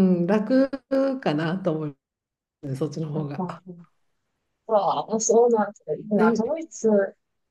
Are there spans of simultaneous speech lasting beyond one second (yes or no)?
no